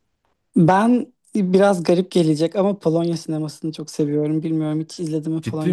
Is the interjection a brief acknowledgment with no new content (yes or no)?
no